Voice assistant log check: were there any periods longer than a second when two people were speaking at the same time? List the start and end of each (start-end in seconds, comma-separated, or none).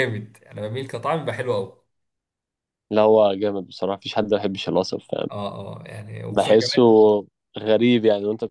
none